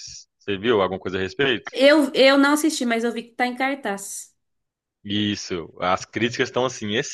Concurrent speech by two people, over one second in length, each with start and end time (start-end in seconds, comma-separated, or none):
none